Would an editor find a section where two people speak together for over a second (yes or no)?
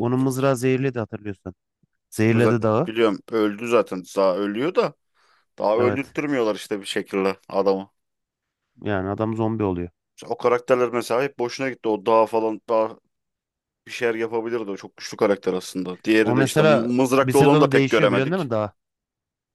yes